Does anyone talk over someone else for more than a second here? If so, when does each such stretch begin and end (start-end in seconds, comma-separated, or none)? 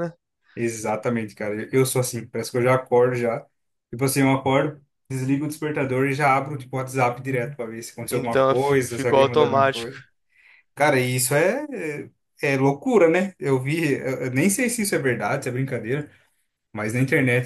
8.1-9.9